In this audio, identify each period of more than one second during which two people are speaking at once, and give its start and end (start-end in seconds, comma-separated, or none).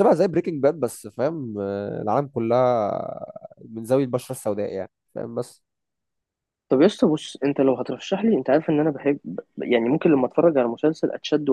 none